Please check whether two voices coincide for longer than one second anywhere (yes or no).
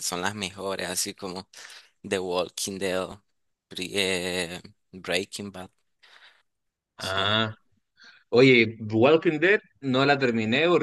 no